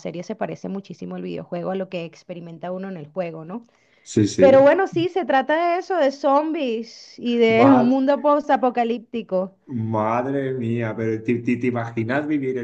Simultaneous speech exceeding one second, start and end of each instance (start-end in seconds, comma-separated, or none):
none